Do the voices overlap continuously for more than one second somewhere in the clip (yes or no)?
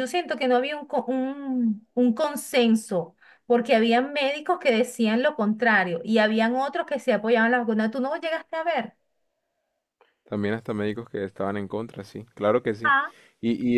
no